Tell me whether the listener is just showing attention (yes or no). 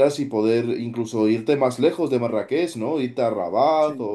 yes